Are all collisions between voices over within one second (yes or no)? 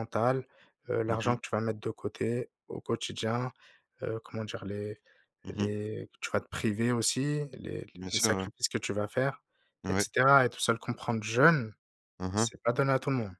yes